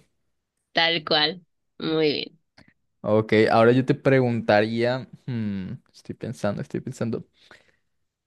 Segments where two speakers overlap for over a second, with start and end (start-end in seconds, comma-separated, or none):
none